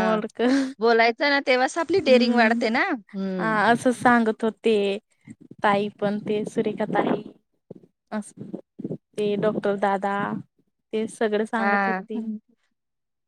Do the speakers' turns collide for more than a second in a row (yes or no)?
yes